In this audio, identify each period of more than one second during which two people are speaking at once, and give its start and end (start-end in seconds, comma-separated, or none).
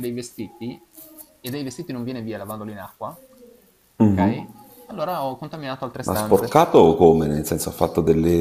none